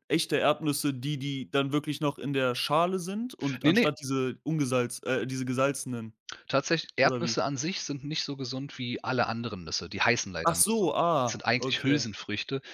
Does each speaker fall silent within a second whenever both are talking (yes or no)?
no